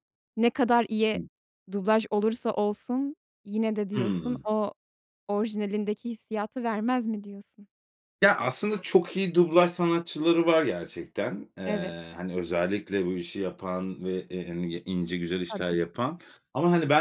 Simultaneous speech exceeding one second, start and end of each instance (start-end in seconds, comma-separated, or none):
none